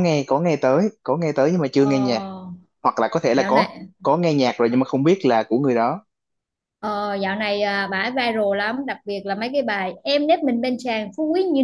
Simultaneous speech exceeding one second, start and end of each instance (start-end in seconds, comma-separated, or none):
none